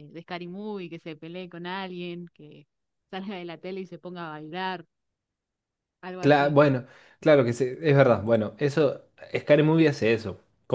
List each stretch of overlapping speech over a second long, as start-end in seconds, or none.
none